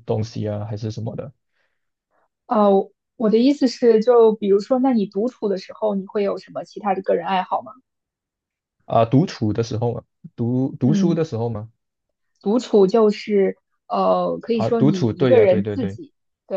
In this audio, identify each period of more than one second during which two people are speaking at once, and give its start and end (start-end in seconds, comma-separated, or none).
14.5-16.0